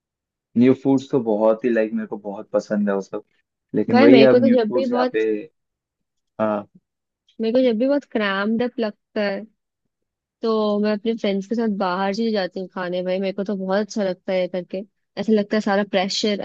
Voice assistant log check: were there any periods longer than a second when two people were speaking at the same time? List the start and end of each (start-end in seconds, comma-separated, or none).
3.9-5.2